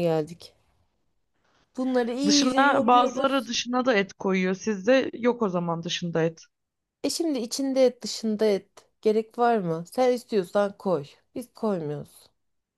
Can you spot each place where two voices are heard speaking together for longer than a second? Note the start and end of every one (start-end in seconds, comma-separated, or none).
2.3-3.5